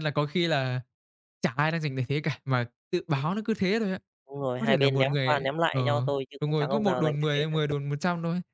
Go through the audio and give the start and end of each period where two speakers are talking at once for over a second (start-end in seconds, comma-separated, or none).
4.6-7.6